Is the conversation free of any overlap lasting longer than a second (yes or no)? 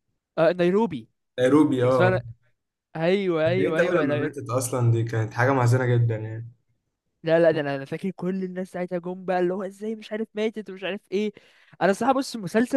yes